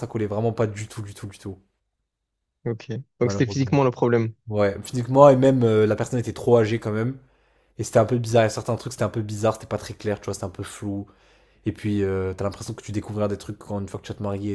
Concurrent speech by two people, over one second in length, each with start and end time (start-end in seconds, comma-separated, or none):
none